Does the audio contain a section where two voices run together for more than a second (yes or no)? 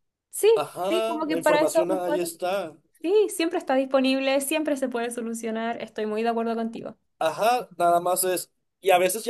yes